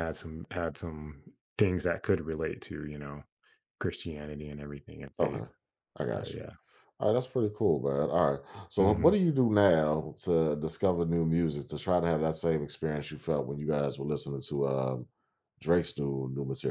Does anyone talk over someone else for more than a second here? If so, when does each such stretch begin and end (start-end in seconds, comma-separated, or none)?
none